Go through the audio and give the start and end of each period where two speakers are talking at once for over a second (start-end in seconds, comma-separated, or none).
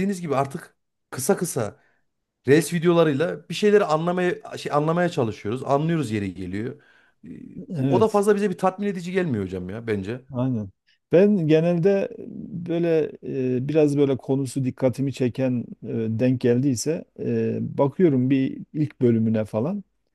none